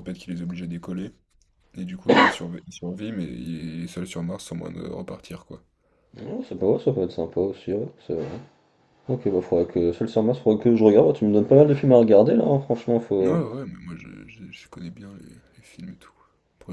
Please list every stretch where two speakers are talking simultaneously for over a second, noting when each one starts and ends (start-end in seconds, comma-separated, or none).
none